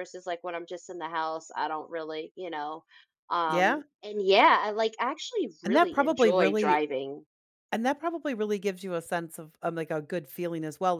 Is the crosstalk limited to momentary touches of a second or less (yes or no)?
no